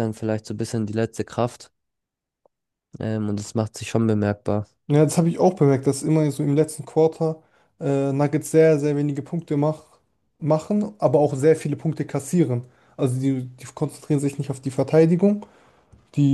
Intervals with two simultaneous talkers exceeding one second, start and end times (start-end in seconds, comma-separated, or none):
none